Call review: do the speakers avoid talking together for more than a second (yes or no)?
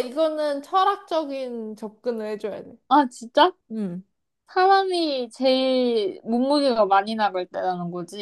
yes